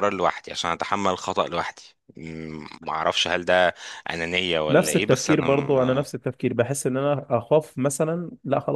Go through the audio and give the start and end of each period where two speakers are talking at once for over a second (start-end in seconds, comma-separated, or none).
4.7-6.1